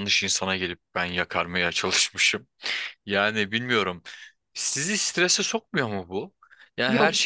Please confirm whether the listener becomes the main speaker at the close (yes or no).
no